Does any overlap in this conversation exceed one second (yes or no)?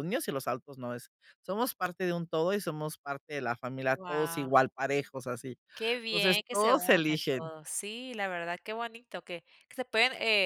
yes